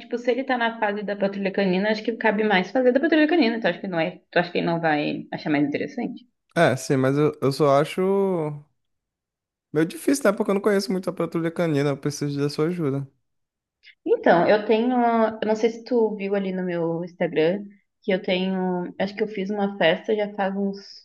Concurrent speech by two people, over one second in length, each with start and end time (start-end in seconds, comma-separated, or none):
none